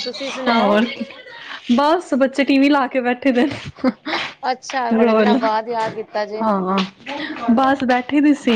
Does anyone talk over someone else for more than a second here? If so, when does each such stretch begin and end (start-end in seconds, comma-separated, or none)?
none